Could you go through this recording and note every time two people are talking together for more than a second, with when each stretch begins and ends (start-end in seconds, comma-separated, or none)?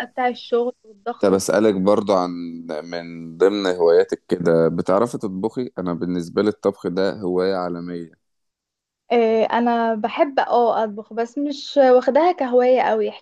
none